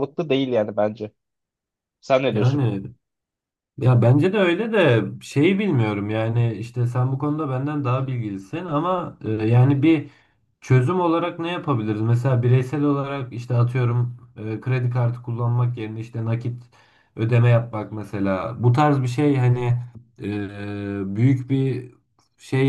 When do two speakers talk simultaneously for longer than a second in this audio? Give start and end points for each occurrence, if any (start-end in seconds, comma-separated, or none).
none